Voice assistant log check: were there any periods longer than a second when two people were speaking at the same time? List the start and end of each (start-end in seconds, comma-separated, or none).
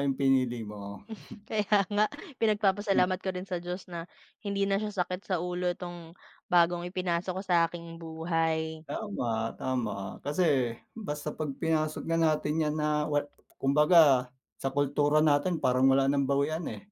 none